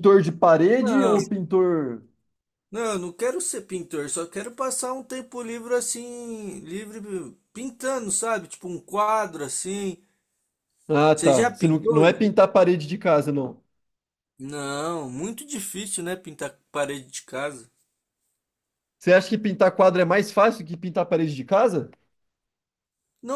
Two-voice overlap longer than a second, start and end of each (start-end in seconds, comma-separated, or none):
11.1-12.3